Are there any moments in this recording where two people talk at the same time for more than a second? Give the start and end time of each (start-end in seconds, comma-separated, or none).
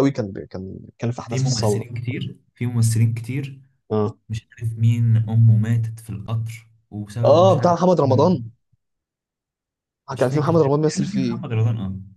10.1-11.4